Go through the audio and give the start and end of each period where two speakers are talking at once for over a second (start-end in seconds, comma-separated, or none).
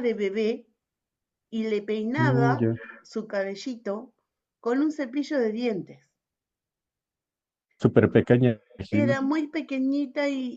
none